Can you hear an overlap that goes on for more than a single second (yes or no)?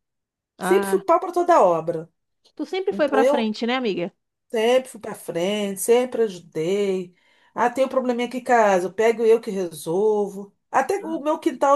no